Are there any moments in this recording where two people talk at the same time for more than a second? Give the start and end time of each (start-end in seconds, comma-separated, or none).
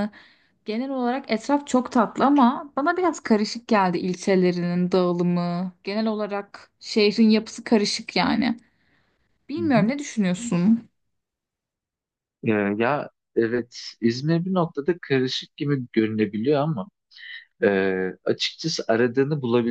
none